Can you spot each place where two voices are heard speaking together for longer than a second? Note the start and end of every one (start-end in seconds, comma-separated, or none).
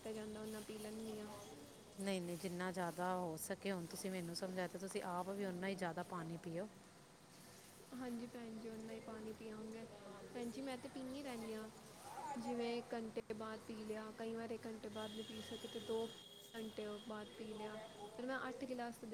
none